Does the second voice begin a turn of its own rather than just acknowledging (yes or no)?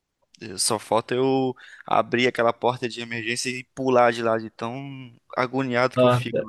yes